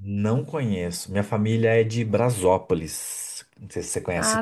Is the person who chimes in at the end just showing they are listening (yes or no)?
no